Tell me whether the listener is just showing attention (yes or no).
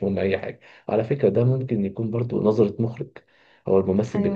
yes